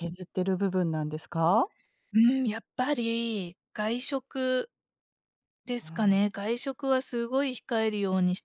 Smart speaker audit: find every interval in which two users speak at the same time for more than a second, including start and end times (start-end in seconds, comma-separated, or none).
none